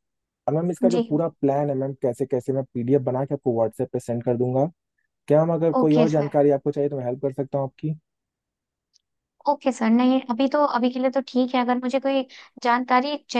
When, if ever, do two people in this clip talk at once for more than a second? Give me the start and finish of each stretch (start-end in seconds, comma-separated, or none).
none